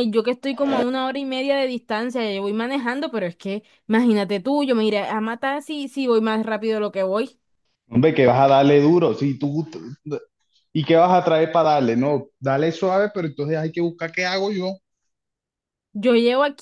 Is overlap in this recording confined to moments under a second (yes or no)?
yes